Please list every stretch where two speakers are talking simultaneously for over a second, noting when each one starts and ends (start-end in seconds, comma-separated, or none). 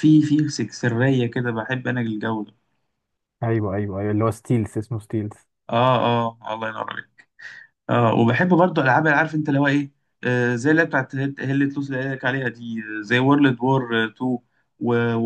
none